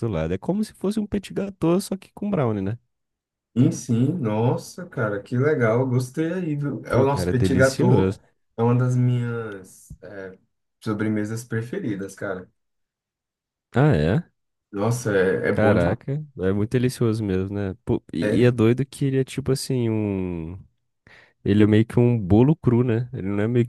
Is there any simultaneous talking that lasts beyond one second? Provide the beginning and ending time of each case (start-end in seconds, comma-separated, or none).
6.9-8.2